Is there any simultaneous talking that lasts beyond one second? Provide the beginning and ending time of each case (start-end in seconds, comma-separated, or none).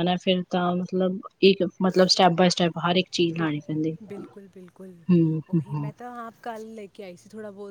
none